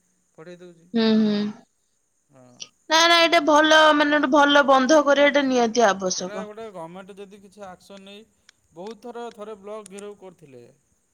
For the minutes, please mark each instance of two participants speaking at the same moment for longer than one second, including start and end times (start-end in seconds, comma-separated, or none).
none